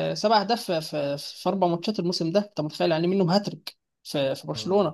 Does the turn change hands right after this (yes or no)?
no